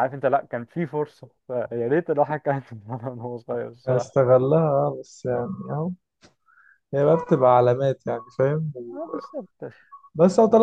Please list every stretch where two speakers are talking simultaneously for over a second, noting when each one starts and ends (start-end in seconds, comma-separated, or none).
none